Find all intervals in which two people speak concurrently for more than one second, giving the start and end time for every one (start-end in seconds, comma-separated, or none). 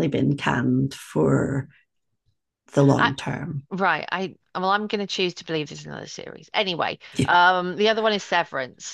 none